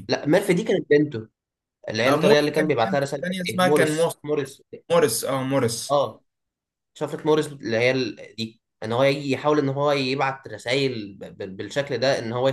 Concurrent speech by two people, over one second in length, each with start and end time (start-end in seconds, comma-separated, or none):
2.1-4.1